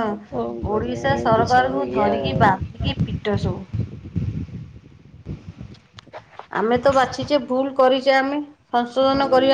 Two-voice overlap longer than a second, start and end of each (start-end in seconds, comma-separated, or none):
0.7-2.8